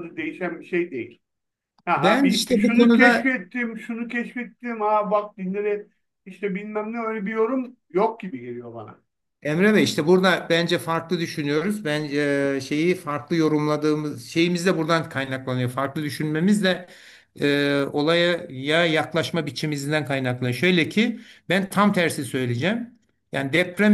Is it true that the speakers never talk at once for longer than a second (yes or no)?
no